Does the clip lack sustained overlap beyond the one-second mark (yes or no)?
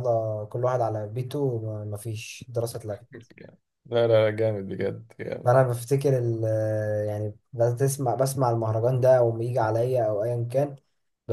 yes